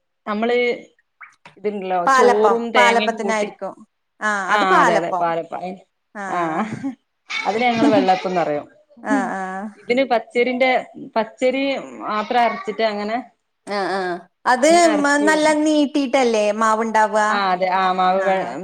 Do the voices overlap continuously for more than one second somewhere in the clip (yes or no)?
yes